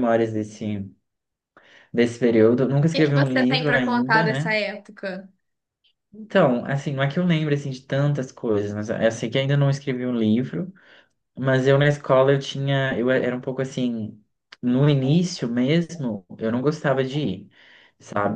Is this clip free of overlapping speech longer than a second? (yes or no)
no